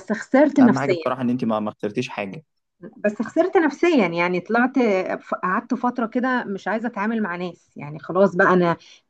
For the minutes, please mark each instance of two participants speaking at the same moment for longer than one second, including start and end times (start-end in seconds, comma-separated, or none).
none